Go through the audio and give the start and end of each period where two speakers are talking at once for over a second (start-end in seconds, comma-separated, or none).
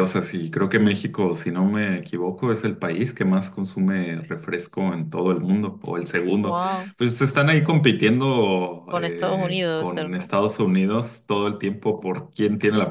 8.9-10.3